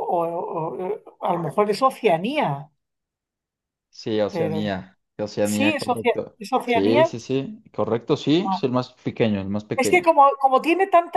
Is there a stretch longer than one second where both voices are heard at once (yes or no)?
yes